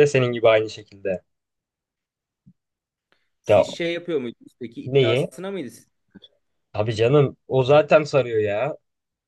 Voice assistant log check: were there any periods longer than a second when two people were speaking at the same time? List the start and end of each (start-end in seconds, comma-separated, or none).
none